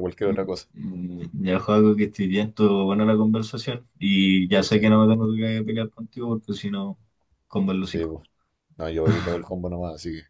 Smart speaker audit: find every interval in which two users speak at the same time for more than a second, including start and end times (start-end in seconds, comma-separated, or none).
none